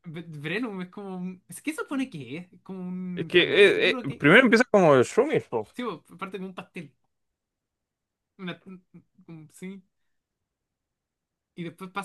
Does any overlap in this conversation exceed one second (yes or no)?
yes